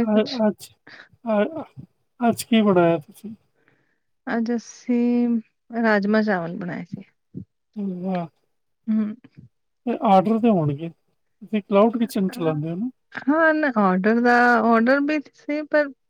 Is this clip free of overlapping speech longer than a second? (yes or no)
yes